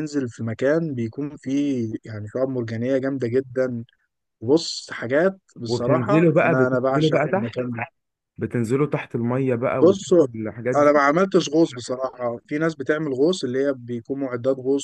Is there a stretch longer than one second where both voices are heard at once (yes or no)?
yes